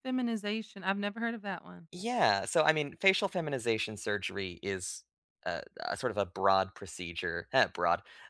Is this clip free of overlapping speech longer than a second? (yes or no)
yes